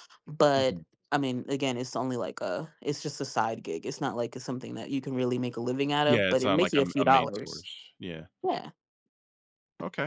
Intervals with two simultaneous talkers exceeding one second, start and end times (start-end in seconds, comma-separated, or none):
6.1-7.7